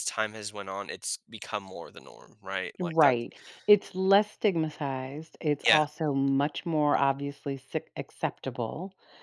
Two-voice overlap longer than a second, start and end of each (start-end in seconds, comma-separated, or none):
none